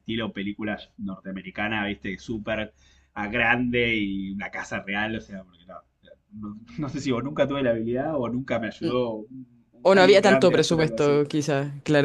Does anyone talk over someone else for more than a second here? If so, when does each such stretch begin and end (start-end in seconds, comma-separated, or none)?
9.8-11.2